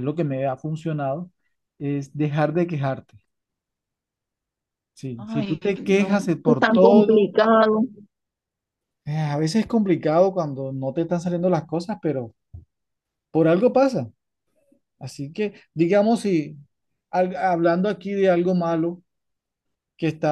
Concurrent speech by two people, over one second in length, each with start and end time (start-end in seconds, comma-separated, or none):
5.2-7.3